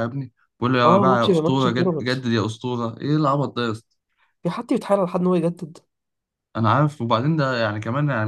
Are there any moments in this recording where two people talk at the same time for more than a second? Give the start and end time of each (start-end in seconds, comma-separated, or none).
0.8-2.1